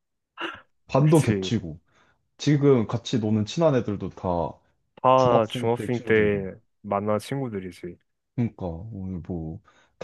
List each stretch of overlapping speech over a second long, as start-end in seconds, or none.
5.2-6.4